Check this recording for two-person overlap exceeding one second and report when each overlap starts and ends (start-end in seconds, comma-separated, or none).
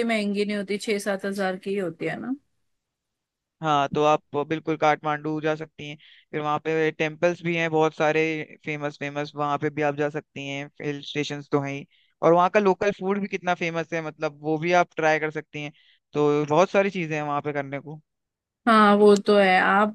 none